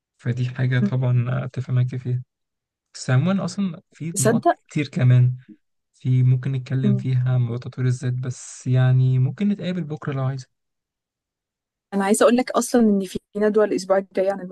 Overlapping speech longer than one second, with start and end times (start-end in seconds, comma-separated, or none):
none